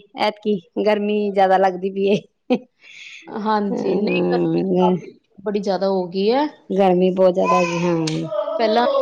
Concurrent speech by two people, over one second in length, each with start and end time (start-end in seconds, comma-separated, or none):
3.7-5.0